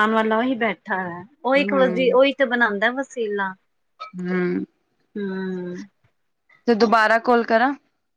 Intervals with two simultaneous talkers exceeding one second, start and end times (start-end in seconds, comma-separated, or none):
none